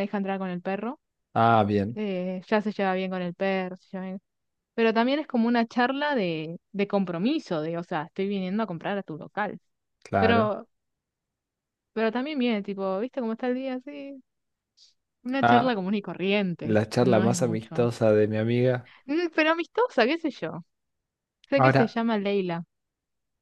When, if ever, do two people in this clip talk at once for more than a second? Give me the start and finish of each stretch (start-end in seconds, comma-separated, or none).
16.6-17.9